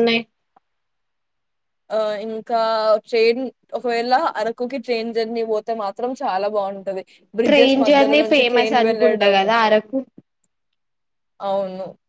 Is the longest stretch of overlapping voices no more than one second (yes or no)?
no